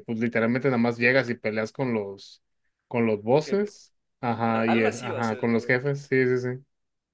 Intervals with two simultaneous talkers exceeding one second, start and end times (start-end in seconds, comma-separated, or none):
4.5-5.7